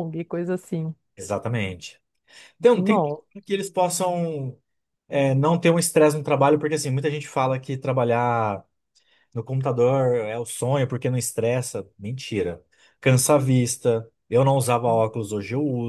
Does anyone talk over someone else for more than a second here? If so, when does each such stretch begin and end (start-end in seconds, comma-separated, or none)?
none